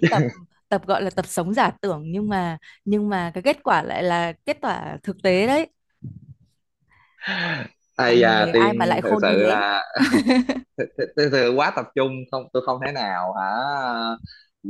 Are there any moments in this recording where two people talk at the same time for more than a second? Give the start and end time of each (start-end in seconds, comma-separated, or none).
8.0-9.7